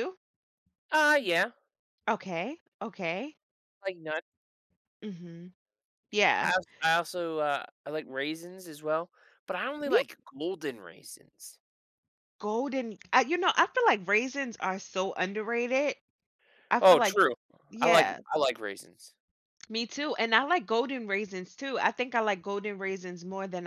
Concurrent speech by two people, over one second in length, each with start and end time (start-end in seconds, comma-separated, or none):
none